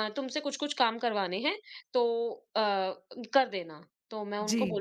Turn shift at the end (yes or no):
no